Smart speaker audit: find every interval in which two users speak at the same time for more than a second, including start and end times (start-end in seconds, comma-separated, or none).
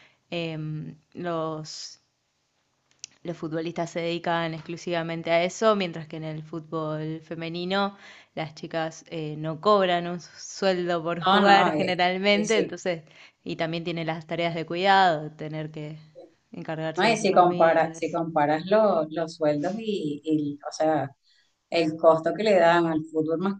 11.3-12.8, 17.0-18.2